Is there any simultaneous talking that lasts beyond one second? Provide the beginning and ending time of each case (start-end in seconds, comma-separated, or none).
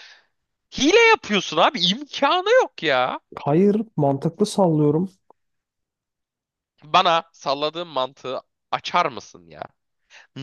none